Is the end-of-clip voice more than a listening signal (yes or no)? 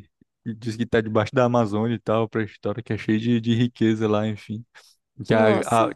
no